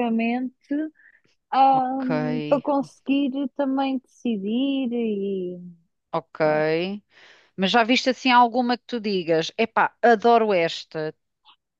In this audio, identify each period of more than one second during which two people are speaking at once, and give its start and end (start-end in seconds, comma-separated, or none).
none